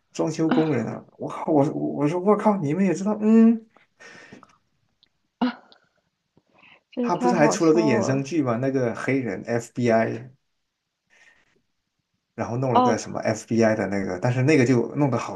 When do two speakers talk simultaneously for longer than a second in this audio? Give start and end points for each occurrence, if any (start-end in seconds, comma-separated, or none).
7.0-8.2